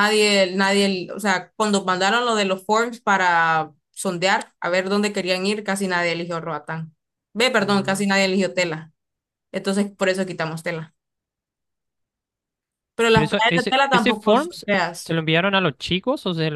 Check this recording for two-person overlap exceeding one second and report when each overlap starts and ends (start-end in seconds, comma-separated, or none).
13.1-15.2